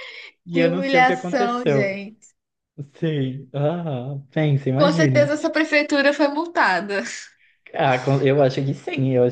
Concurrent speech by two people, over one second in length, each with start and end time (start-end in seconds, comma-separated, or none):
0.5-2.0